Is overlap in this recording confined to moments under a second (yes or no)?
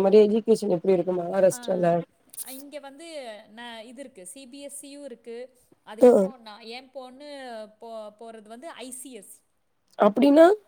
yes